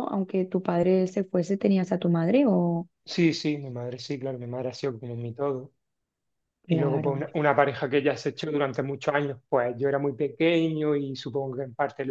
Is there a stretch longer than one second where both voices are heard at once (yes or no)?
no